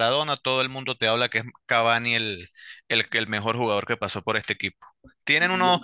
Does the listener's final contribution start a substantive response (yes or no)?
no